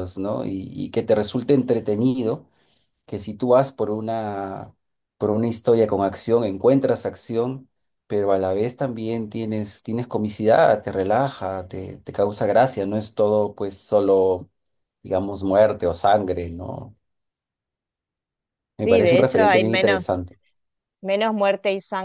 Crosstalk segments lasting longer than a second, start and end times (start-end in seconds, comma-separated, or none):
18.8-20.2